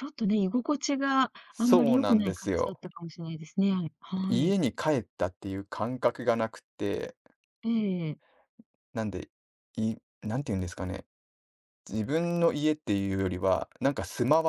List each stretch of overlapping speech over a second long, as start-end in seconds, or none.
1.5-2.8